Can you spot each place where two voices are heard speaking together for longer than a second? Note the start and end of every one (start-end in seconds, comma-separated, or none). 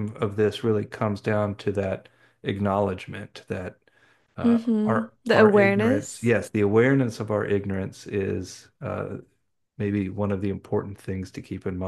4.4-6.3